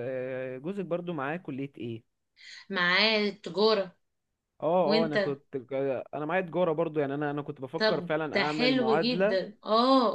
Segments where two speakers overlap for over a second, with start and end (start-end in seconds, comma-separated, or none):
7.8-9.4